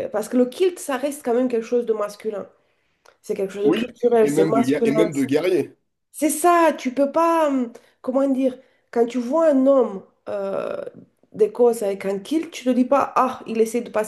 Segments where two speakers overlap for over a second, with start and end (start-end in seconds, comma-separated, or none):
3.6-5.1